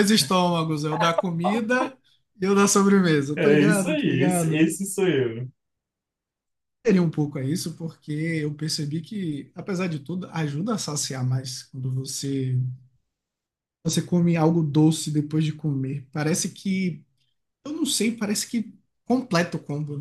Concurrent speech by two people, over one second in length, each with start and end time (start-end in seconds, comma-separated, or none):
3.4-4.7